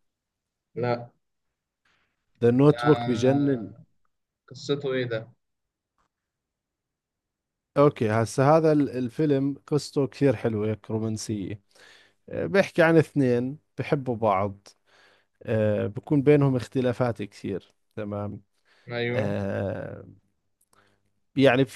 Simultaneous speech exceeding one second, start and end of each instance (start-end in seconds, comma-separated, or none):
none